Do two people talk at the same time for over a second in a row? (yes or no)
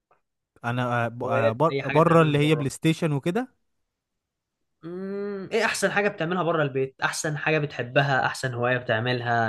yes